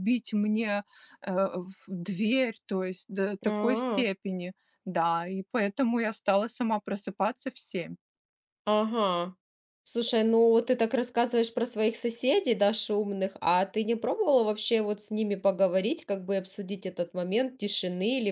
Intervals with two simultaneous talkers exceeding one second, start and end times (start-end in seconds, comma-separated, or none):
none